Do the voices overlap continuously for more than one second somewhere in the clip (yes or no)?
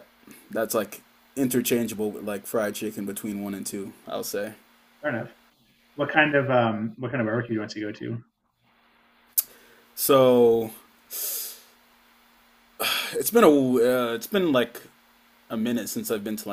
no